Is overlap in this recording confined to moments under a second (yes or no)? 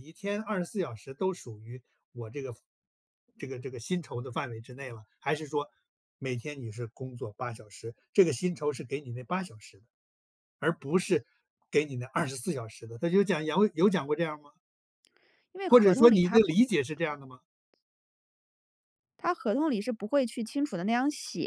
no